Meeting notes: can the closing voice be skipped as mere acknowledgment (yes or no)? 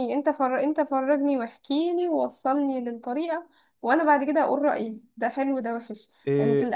yes